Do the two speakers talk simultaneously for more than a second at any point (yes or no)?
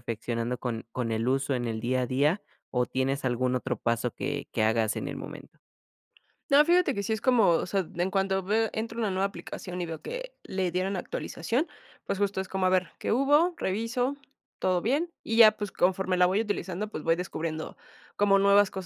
no